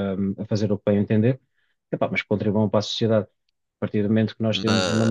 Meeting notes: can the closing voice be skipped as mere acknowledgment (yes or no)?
yes